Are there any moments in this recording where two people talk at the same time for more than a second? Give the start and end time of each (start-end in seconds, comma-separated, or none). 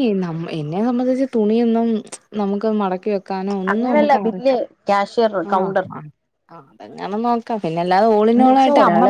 3.7-5.8